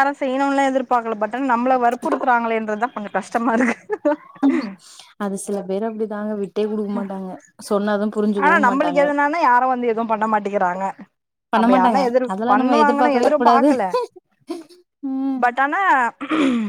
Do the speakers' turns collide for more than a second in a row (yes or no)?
yes